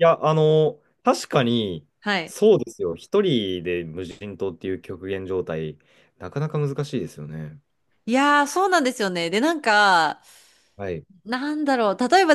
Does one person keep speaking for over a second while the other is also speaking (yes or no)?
no